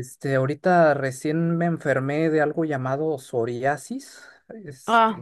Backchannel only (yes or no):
no